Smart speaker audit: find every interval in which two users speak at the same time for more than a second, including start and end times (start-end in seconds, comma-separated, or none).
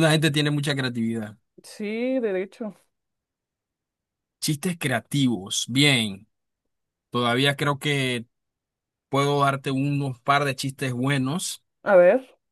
none